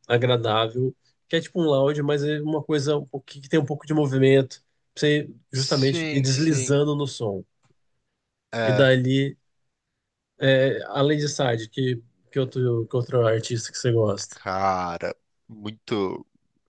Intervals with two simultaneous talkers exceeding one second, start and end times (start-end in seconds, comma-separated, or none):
5.5-6.8